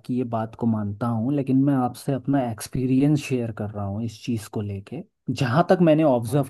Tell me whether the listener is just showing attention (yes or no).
yes